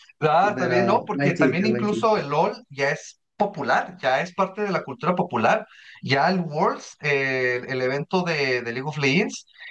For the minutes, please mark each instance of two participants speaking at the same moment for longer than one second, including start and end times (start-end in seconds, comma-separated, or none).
0.5-2.2